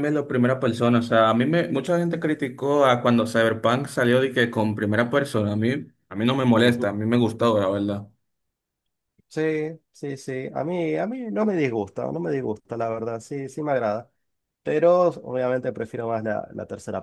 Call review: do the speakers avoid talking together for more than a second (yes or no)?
yes